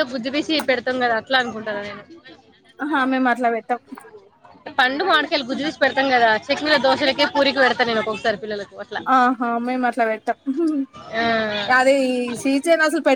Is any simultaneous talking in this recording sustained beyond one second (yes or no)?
no